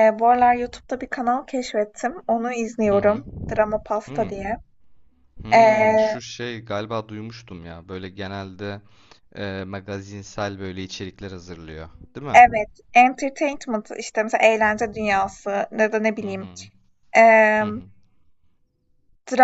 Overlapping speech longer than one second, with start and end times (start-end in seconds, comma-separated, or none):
none